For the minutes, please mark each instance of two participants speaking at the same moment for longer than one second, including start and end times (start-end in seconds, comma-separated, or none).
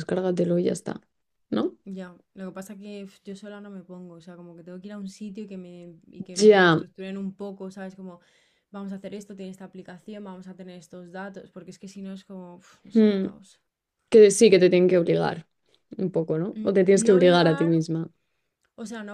16.5-17.8